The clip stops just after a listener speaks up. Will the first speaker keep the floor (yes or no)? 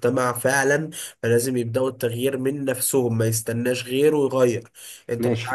yes